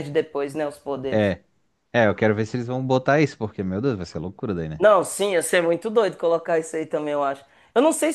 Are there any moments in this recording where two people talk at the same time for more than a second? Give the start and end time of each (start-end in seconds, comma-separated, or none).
none